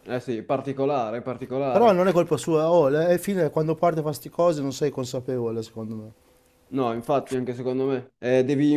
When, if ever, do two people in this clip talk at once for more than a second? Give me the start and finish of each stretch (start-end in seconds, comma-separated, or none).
none